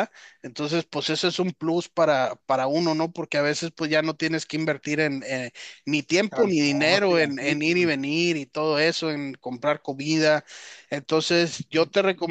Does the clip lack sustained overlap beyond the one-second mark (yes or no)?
no